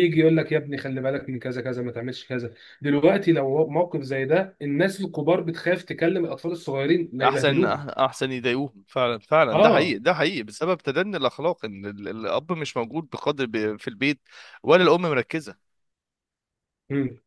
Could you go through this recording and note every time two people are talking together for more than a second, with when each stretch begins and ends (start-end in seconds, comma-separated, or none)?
none